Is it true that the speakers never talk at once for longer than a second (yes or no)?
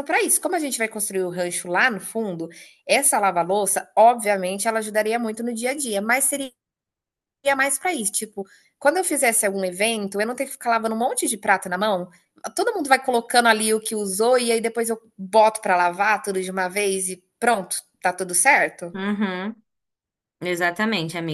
yes